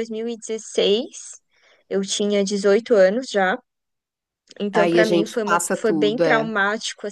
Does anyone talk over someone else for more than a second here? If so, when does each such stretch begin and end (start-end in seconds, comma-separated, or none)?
4.7-6.5